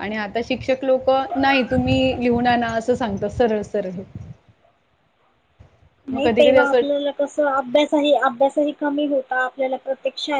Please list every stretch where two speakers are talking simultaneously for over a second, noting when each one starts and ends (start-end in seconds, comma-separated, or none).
none